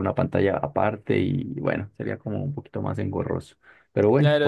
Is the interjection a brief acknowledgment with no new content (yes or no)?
no